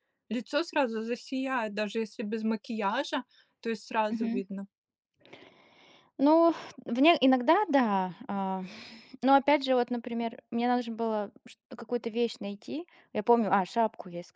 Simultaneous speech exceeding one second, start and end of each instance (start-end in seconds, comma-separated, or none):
none